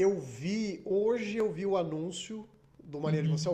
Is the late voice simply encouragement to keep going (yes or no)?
yes